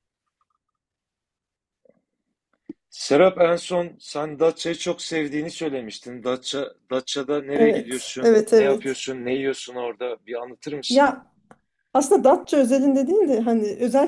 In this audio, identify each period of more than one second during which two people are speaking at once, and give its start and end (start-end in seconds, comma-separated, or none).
7.5-9.0